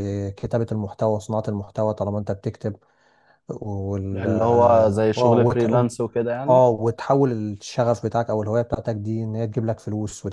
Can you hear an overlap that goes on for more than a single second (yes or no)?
yes